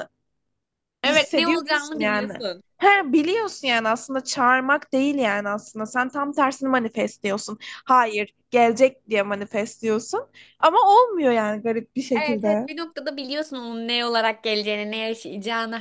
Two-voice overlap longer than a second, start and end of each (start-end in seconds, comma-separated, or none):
1.0-2.3